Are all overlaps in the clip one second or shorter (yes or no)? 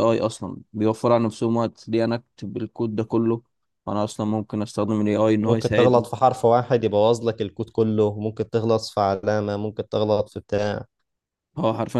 yes